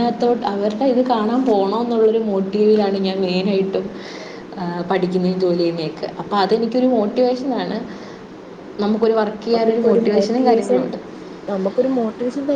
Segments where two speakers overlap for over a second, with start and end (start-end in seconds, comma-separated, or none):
9.4-10.8